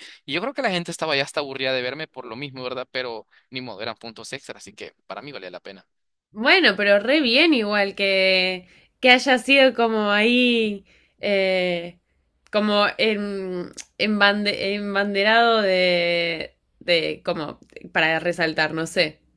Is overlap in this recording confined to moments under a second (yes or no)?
yes